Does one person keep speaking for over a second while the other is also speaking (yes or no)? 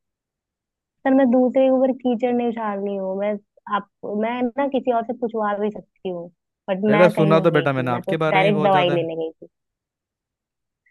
yes